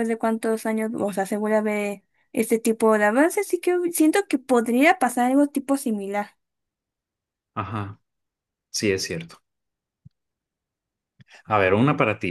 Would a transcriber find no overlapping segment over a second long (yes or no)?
yes